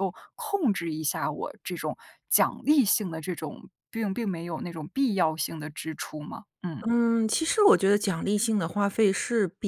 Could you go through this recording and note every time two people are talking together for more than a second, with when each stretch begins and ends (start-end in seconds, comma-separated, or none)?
none